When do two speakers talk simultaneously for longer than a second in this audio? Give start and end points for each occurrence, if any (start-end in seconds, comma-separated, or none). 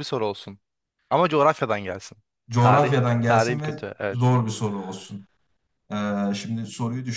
2.6-4.3